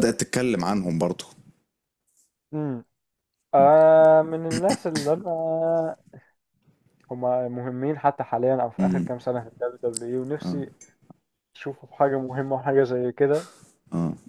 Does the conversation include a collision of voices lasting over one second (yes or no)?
no